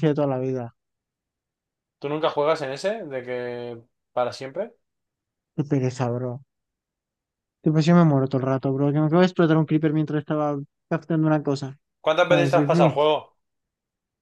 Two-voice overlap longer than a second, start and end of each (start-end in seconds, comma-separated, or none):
none